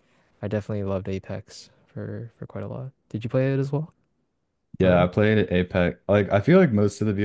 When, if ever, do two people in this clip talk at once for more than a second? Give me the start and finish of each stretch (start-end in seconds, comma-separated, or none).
none